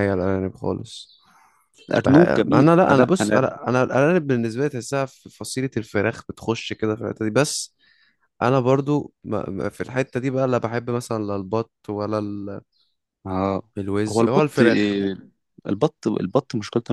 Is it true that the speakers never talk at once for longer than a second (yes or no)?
no